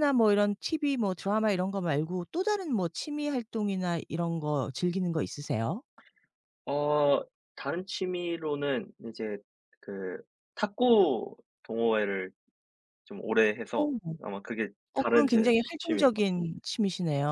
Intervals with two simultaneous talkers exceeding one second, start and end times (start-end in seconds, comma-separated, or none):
14.9-16.3